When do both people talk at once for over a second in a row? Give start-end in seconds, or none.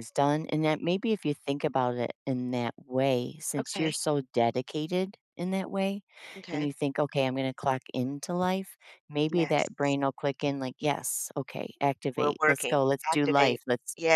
12.2-13.6